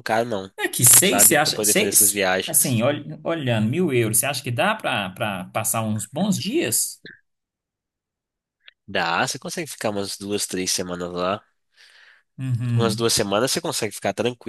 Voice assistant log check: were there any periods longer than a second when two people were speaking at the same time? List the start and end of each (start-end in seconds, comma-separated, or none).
1.0-2.8